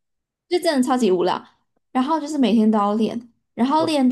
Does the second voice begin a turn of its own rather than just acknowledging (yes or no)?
no